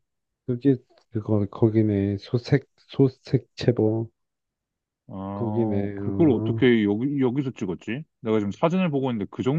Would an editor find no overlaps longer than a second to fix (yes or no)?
no